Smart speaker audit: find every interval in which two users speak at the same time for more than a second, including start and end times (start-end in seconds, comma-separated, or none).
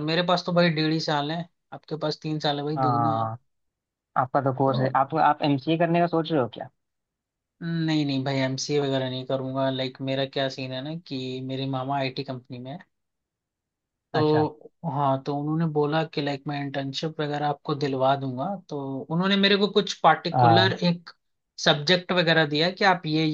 none